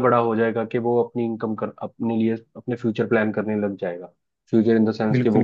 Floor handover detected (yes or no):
no